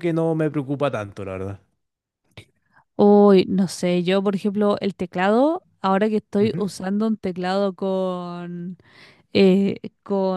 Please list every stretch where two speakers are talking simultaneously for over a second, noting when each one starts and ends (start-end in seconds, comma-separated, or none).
none